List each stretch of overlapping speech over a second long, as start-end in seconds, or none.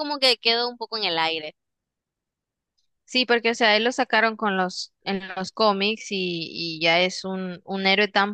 none